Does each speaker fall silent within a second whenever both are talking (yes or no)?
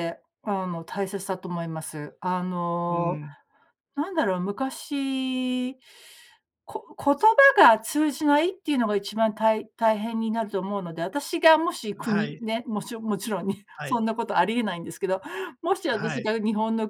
yes